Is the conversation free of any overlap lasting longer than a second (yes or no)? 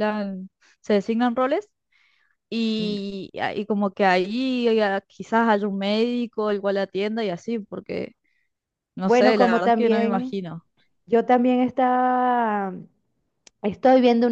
no